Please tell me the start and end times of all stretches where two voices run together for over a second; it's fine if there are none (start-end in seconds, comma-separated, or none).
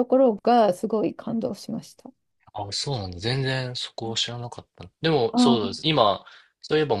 none